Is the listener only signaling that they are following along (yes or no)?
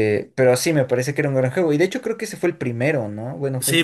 no